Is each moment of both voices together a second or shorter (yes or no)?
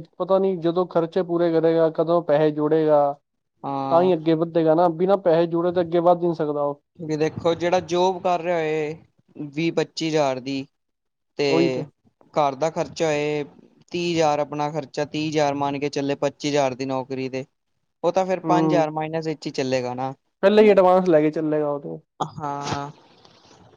yes